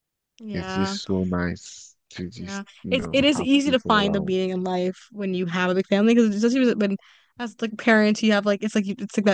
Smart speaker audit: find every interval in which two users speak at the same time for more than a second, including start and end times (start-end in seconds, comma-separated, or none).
2.3-4.3